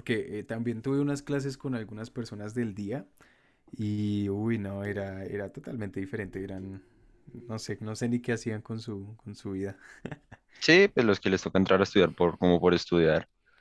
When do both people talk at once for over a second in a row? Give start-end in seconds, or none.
none